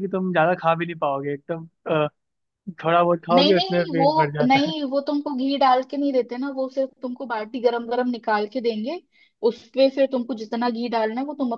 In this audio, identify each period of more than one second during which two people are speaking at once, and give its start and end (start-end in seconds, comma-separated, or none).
3.3-4.7